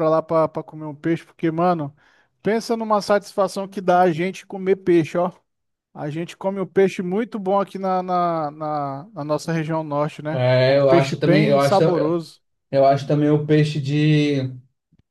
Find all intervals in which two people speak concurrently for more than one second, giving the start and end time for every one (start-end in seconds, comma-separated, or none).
10.3-11.8